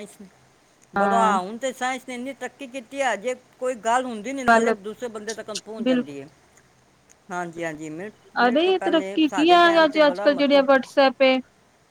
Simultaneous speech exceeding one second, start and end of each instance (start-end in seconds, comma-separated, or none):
8.5-10.6